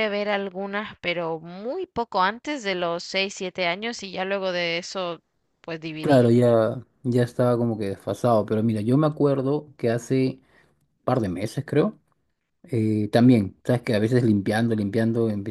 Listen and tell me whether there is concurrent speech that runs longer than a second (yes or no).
no